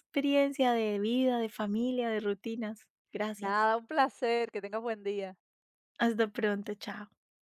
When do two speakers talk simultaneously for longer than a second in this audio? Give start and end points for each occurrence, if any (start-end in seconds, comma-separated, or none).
none